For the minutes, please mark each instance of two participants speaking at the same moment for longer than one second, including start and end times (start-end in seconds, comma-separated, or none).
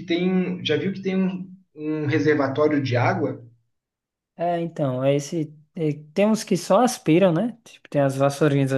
none